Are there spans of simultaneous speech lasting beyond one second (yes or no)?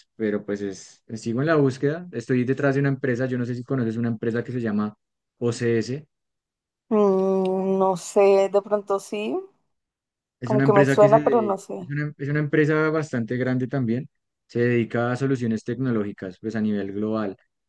yes